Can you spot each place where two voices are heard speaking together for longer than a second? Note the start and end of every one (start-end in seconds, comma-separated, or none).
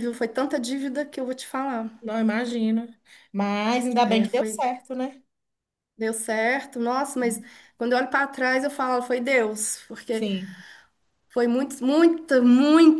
none